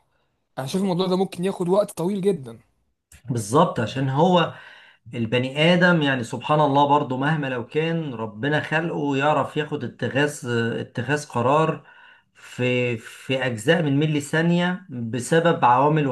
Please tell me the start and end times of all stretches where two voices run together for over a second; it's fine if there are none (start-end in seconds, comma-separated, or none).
none